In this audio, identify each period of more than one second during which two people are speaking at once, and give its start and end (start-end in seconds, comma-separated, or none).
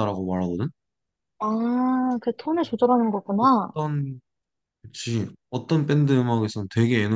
none